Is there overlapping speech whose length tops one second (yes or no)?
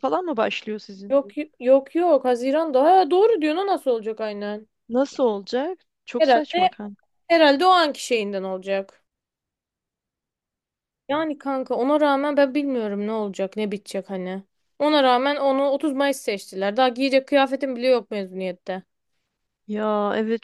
no